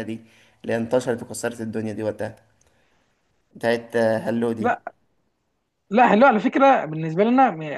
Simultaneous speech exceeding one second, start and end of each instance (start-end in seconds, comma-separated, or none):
none